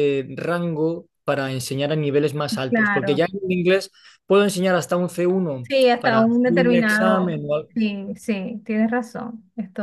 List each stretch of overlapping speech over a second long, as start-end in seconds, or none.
5.6-7.4